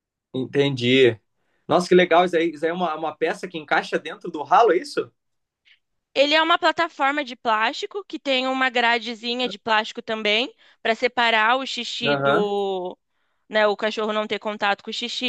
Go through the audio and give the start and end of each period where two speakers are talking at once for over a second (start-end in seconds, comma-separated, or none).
none